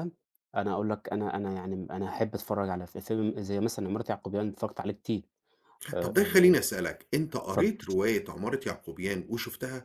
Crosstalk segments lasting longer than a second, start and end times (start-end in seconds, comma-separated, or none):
none